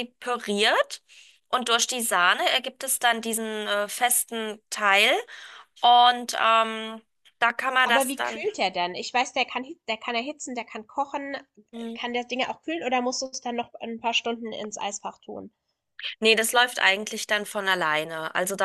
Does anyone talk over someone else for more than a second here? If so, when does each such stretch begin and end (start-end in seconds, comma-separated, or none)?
none